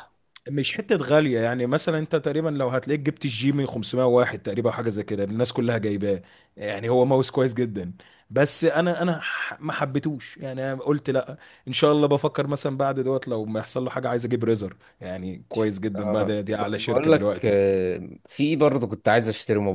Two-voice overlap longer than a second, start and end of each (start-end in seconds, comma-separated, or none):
16.0-17.5